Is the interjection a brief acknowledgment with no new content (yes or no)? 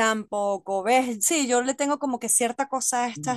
no